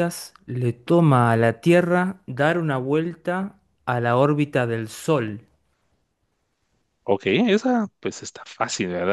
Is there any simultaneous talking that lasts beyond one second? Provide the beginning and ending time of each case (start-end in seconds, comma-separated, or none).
none